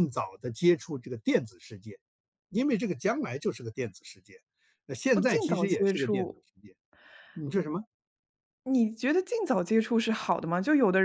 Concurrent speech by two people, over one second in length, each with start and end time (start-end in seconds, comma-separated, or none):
5.1-6.4